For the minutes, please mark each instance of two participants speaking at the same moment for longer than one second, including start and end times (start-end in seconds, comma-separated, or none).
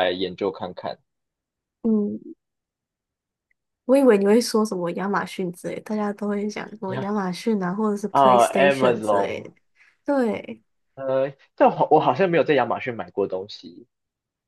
8.1-9.5